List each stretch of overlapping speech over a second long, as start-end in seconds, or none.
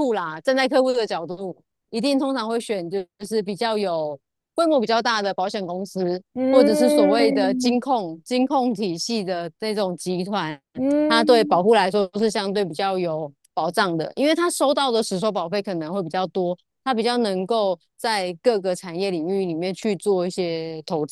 6.3-7.8